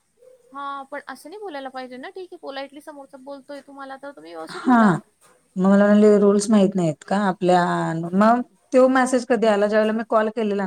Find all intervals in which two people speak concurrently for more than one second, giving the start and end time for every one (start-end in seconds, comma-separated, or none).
none